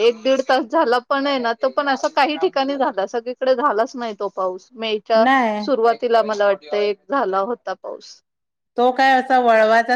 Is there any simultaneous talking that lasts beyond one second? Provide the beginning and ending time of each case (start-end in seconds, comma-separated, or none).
none